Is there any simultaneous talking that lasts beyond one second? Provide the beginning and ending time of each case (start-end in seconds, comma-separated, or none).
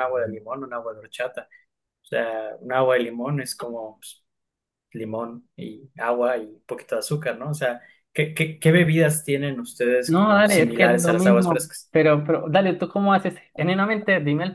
10.1-11.9